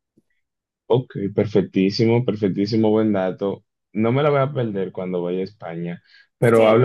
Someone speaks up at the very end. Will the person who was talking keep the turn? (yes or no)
yes